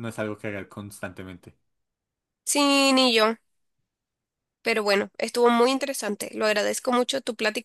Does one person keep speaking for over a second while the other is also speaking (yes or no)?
no